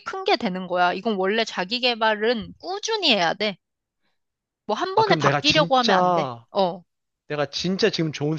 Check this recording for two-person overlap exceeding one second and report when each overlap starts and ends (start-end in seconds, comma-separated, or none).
5.0-6.5